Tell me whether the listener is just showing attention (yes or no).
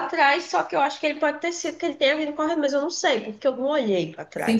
no